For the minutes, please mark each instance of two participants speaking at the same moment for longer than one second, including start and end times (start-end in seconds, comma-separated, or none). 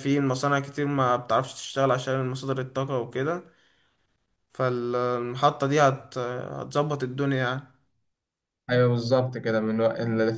none